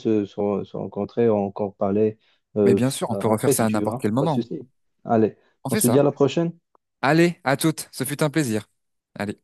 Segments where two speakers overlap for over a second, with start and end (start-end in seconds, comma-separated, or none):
2.7-4.4